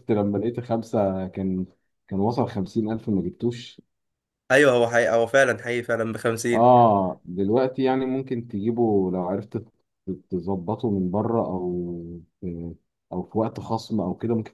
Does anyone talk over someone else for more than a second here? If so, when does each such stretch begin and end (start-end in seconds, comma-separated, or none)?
none